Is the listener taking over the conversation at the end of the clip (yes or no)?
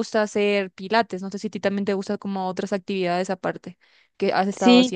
yes